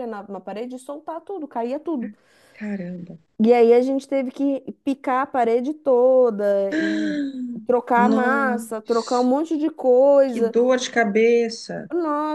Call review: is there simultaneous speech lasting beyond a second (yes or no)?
yes